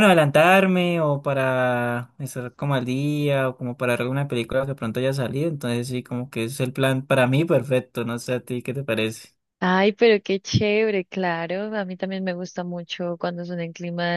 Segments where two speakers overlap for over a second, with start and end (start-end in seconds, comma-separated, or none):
none